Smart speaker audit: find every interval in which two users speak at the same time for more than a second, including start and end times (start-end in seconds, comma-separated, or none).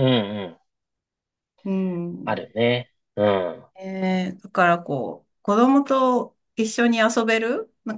none